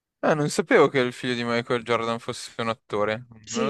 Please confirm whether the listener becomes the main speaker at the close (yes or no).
yes